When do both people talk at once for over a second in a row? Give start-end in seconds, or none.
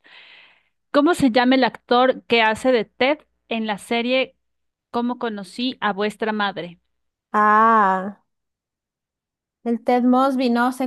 none